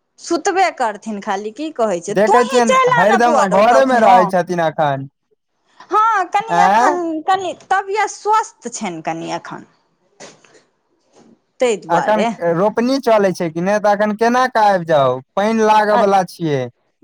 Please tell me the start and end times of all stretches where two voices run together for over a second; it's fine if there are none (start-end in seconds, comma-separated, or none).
2.2-4.2